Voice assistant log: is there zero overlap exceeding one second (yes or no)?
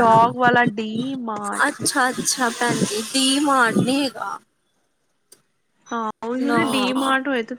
yes